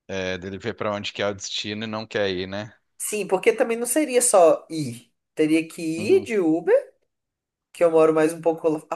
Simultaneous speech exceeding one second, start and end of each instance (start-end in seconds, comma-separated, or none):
none